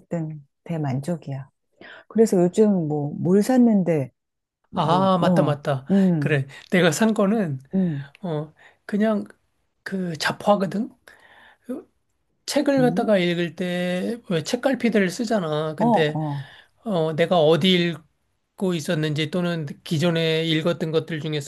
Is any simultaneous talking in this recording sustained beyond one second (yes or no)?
yes